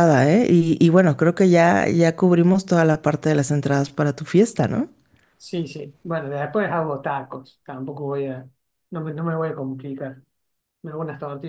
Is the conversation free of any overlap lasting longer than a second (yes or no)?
yes